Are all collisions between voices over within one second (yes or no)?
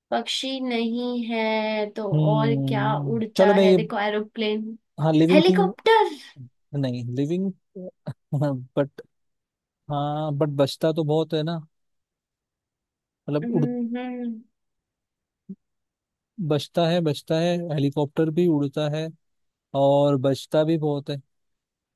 no